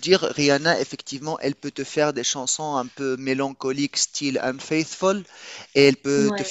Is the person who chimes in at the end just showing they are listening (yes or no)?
yes